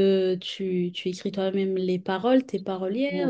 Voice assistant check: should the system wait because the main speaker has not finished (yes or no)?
no